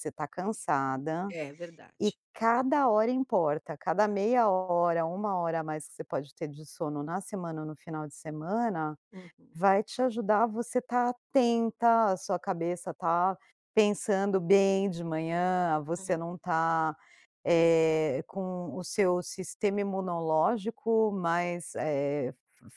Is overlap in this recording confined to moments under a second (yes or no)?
yes